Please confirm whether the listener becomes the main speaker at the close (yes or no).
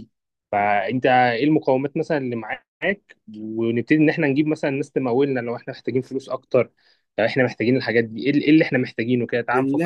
yes